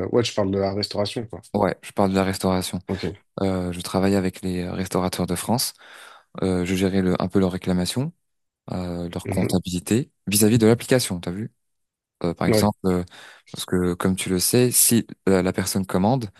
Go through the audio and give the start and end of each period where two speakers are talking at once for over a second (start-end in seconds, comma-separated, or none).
none